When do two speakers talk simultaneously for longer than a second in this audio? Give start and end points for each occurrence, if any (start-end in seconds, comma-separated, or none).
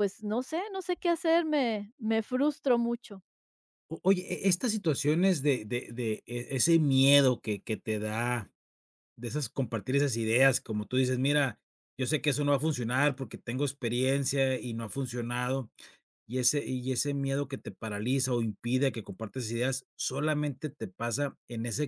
none